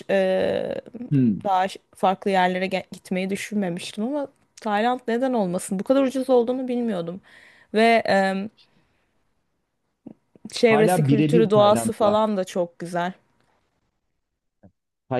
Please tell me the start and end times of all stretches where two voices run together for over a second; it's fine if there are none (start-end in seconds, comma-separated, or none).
10.7-12.2